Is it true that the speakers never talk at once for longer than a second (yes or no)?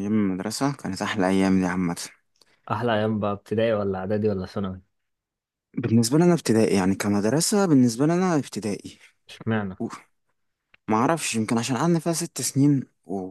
yes